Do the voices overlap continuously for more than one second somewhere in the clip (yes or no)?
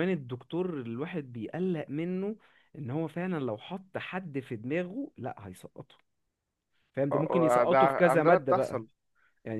yes